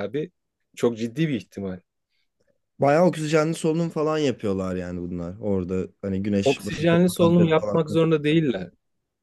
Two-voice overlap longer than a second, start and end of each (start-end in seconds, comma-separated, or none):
6.4-7.8